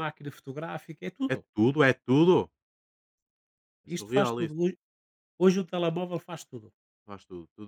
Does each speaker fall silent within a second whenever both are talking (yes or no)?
yes